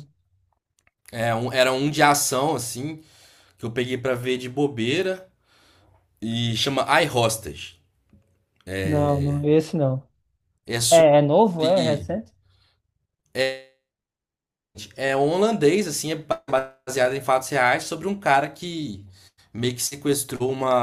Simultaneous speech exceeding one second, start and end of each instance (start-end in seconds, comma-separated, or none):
none